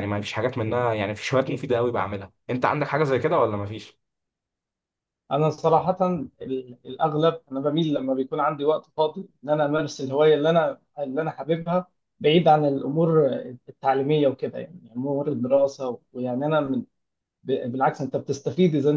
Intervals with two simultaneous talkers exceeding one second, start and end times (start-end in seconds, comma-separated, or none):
none